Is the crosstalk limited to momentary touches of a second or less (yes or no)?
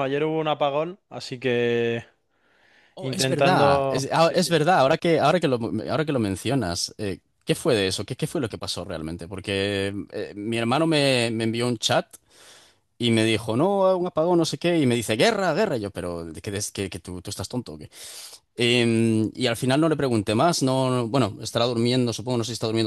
no